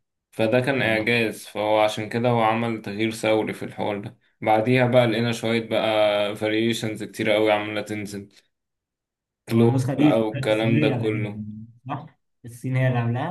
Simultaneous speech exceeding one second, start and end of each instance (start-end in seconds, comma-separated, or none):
9.5-11.4